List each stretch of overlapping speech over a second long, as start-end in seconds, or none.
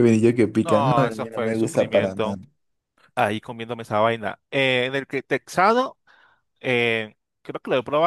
0.6-2.4